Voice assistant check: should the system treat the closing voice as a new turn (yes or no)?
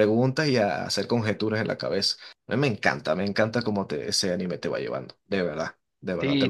yes